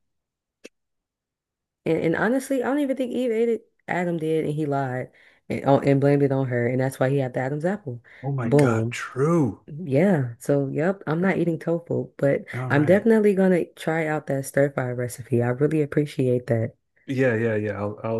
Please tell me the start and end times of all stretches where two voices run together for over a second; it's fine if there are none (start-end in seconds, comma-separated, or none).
none